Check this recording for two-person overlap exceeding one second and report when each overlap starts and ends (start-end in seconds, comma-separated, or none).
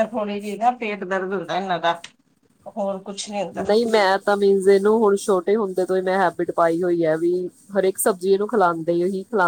none